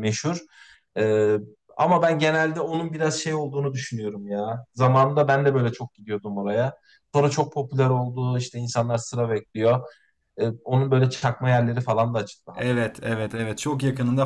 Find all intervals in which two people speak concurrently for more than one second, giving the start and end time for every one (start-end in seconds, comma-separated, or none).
none